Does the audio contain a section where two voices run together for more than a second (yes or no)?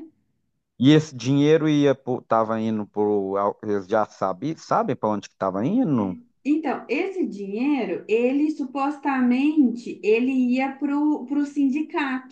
no